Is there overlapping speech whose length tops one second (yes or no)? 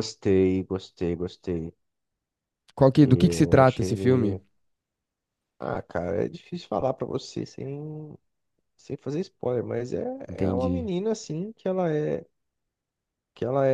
yes